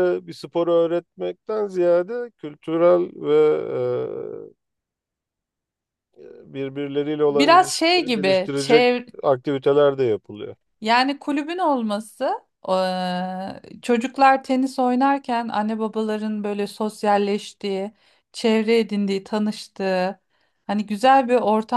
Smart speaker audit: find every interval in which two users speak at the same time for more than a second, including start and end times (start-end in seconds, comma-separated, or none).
7.3-8.8